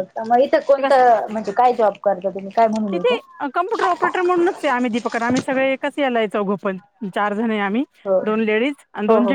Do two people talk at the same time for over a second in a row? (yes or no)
no